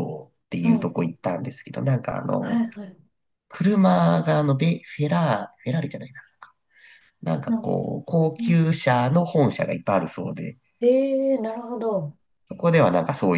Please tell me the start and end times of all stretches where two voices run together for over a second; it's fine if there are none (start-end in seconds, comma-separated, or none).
none